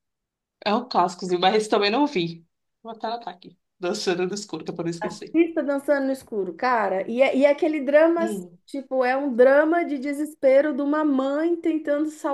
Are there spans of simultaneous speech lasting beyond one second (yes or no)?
no